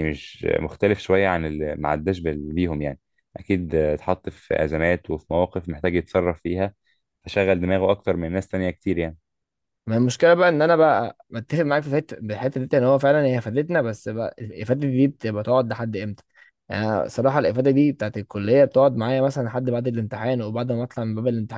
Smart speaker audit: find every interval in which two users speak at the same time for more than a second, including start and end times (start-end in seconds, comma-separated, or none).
none